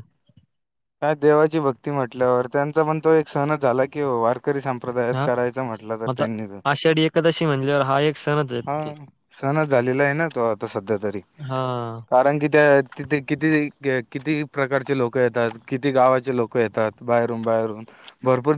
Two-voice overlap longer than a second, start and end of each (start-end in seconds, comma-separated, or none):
none